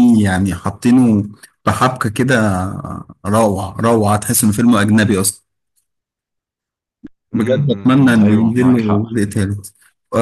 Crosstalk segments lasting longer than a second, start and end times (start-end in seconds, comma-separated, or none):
7.3-9.0